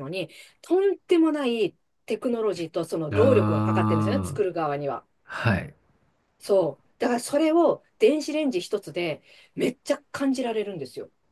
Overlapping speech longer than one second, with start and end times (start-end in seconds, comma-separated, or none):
3.1-4.4